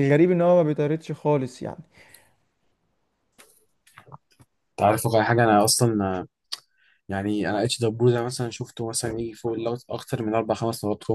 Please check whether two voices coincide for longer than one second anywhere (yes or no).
no